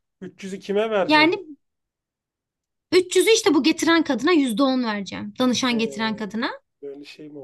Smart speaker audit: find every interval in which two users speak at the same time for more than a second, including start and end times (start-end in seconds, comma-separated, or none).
none